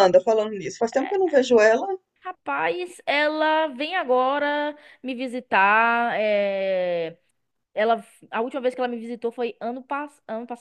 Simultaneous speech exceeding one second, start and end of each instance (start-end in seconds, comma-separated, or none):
none